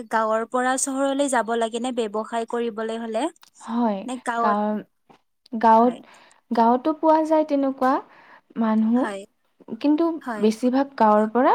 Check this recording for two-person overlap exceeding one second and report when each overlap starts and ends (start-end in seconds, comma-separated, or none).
none